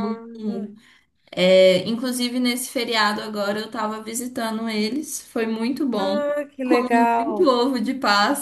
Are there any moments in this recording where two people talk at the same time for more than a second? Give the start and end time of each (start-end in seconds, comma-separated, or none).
none